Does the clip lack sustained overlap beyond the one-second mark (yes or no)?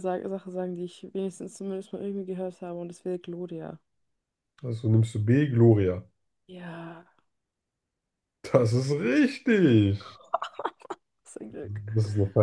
yes